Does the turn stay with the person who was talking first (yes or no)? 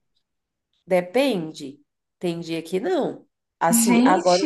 yes